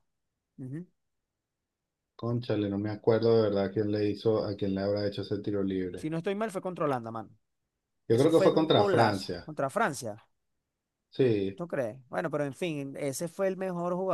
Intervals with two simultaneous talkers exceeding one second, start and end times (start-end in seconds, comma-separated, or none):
8.1-9.5